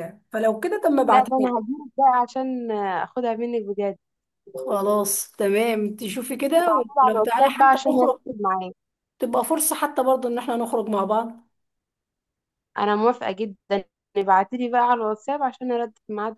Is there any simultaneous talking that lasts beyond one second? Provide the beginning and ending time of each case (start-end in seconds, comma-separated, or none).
7.0-8.2